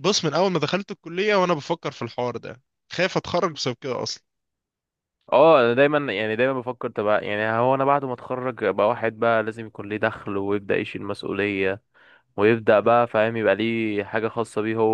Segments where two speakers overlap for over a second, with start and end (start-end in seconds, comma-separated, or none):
none